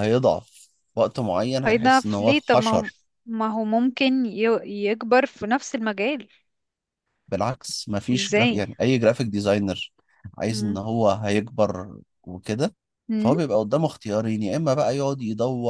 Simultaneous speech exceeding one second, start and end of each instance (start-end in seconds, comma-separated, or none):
1.6-2.9